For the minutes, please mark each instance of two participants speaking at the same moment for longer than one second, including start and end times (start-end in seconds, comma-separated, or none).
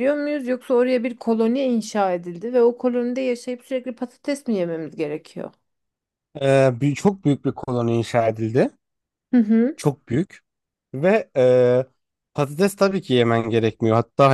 none